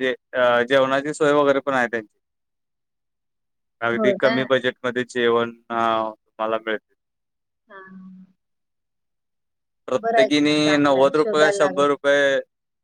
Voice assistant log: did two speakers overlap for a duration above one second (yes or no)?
yes